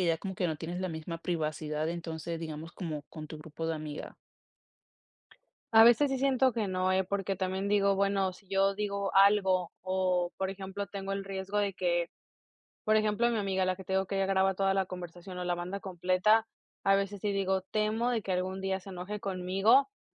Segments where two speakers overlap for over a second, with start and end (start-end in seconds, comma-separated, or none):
none